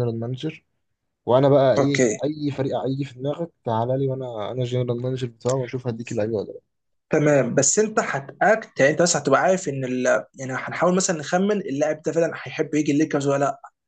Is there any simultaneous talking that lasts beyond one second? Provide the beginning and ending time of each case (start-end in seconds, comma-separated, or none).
none